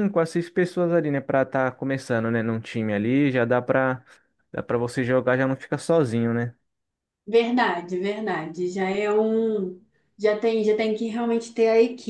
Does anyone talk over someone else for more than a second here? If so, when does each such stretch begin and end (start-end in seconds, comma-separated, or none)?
none